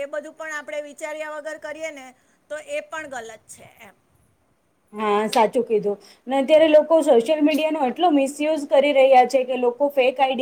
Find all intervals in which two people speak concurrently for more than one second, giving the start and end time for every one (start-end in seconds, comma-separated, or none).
none